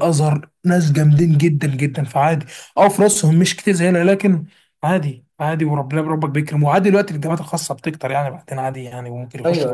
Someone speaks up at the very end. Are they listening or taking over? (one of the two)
taking over